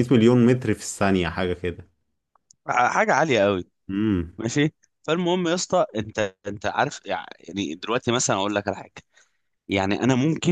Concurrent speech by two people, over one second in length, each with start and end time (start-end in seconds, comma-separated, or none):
none